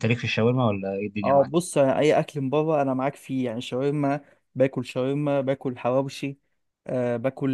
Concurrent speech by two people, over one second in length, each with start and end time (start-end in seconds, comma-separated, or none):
none